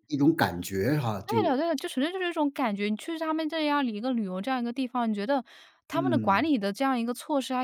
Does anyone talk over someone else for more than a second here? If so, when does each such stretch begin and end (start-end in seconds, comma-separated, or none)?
none